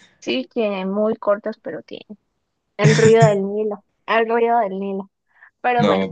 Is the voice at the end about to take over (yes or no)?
yes